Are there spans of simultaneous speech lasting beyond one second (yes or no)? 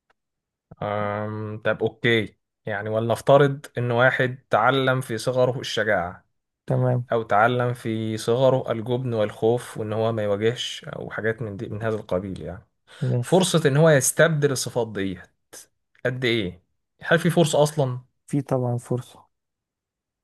no